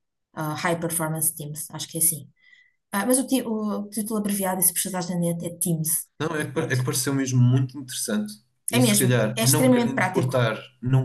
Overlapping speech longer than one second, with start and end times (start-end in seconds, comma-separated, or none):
8.8-10.3